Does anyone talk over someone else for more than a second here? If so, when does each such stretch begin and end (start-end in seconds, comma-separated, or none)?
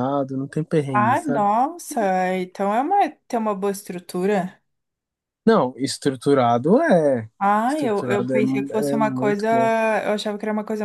7.7-9.5